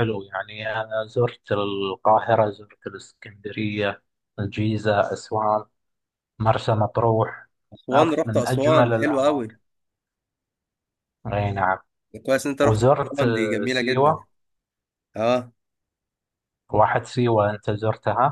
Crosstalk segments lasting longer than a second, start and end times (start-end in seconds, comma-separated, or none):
7.9-9.5, 12.6-14.3